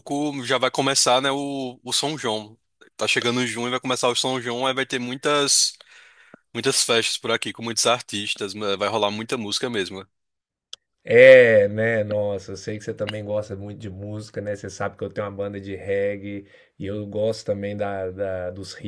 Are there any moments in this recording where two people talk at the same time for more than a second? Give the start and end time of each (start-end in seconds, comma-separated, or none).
none